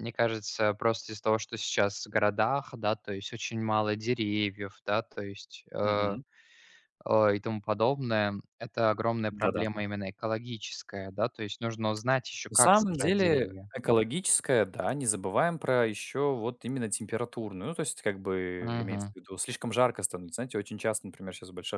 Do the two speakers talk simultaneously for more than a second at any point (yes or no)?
yes